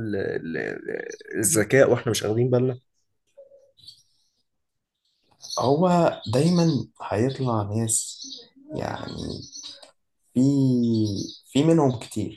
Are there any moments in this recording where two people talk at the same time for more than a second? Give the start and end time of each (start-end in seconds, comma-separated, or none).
none